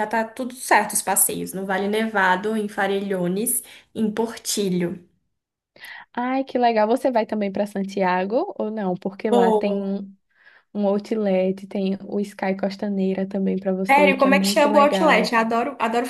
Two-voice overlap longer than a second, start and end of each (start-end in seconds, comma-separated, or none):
13.9-15.3